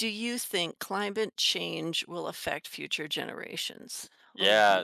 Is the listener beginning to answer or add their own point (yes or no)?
yes